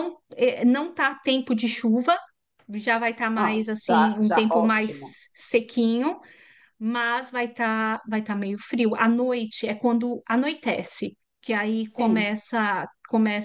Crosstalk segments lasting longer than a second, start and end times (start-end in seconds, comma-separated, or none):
3.4-5.1